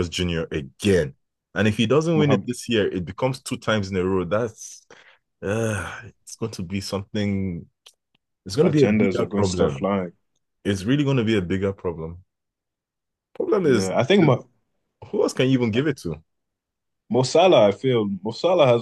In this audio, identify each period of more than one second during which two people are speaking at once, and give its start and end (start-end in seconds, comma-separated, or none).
8.6-9.9